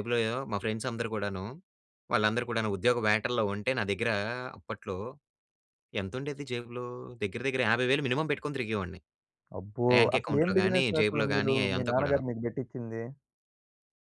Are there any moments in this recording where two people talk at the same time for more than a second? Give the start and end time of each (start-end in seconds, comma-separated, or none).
9.9-12.2